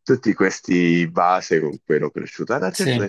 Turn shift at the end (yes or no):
no